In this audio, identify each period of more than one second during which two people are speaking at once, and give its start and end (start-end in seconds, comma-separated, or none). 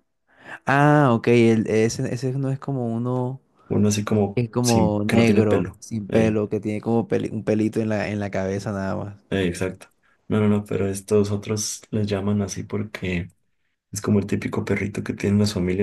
4.3-6.4